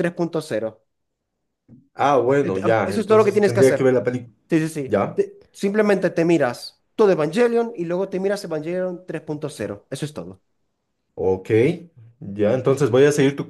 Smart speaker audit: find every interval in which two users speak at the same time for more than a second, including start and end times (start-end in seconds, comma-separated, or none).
2.4-3.9